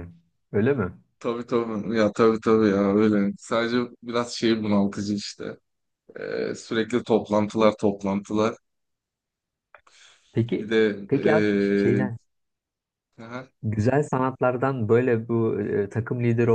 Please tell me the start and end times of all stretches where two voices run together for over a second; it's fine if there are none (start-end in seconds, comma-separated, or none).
none